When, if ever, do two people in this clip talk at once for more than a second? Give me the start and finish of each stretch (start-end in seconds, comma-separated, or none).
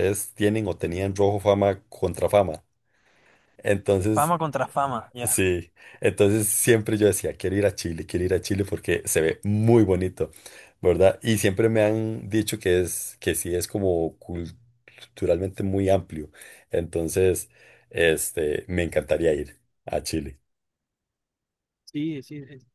none